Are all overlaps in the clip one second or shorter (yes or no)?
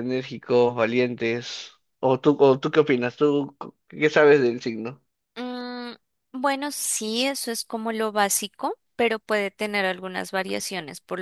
yes